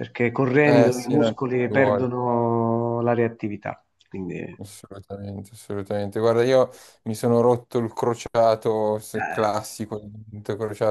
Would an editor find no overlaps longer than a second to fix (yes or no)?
no